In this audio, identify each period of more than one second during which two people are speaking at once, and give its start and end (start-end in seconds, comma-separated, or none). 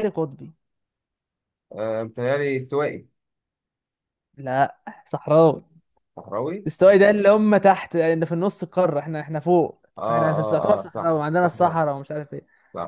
10.0-11.8